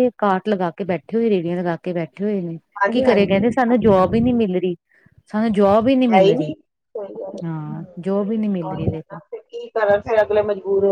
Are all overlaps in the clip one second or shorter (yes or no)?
no